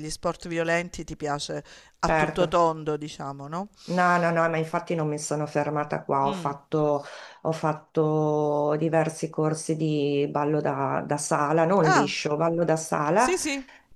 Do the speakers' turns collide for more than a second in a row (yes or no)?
no